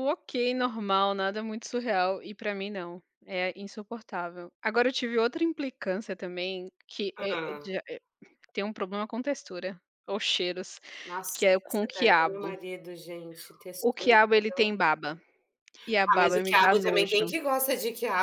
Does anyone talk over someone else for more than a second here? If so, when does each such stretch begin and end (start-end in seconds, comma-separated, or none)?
11.3-12.6, 16.1-17.3